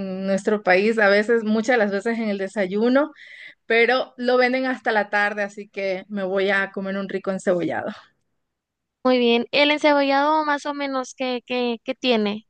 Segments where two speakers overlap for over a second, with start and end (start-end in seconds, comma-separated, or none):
none